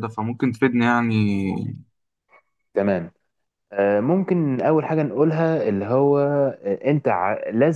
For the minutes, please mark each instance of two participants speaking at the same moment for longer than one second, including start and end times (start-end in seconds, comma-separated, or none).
none